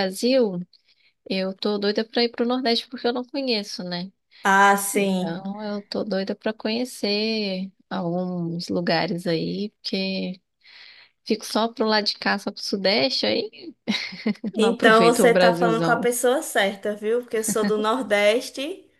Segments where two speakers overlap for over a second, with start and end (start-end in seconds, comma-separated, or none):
14.6-16.1